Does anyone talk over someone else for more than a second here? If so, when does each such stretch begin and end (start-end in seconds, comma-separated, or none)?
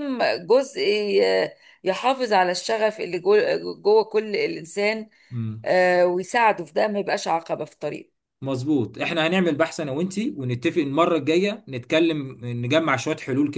none